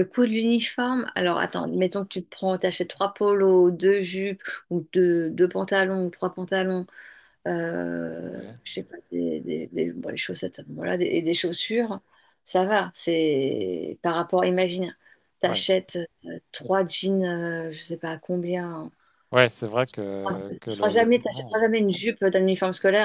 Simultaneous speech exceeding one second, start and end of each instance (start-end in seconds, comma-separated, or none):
20.3-21.6